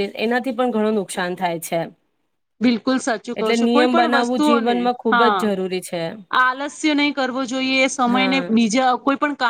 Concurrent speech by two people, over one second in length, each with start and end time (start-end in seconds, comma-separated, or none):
3.4-5.4